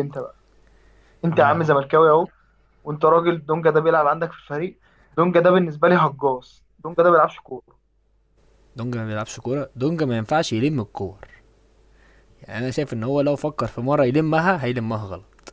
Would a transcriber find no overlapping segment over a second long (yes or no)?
yes